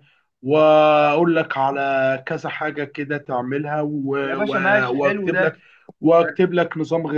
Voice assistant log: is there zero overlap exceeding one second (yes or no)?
no